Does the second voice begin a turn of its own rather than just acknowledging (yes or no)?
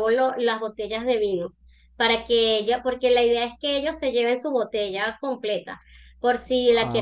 no